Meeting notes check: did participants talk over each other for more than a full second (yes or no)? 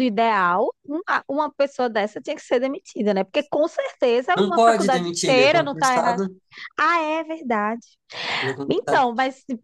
yes